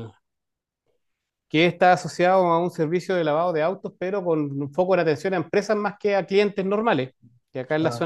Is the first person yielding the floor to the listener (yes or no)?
no